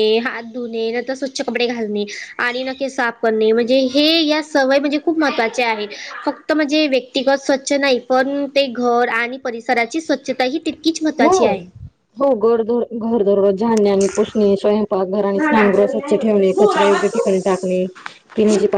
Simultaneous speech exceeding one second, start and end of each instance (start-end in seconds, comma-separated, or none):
15.4-17.5